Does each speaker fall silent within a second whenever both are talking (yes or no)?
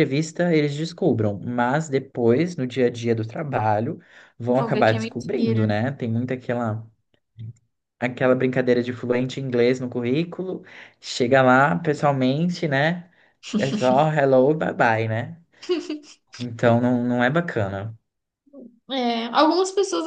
no